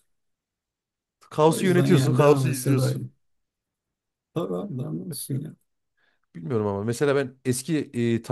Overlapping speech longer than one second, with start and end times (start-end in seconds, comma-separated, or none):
1.5-3.1